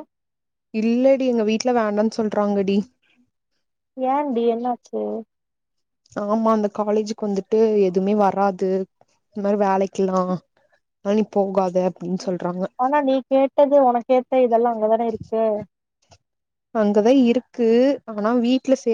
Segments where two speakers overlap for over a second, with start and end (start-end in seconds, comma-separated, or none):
none